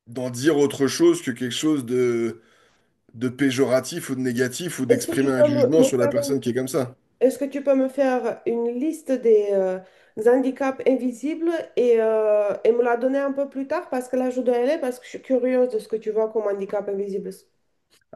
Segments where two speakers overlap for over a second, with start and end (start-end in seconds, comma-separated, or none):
4.9-6.3